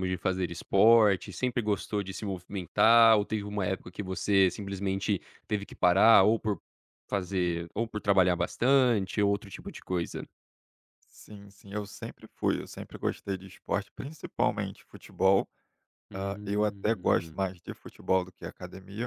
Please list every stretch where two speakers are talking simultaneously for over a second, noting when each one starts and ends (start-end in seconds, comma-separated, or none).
16.1-17.4